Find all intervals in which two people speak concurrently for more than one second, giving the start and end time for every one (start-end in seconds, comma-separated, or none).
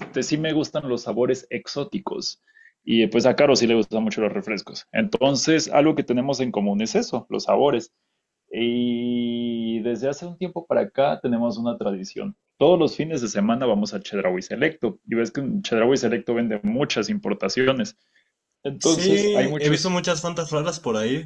18.8-20.0